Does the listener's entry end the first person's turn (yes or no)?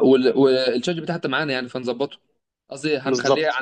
no